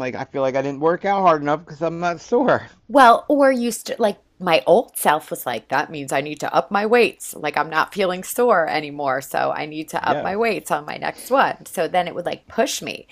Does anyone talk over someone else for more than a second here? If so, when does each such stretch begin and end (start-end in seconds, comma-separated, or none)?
none